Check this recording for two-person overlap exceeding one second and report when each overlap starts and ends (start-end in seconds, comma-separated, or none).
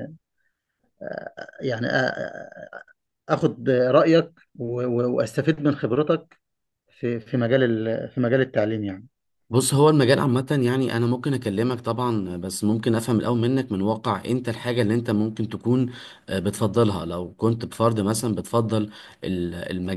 none